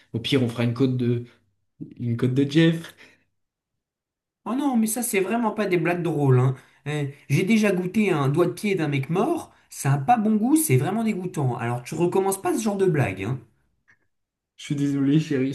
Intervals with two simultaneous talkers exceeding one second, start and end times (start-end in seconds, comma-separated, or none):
none